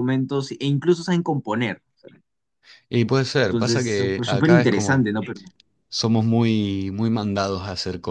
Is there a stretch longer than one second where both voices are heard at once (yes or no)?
yes